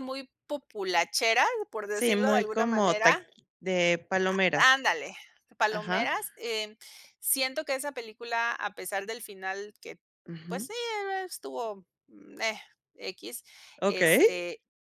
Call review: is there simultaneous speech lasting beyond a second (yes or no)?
yes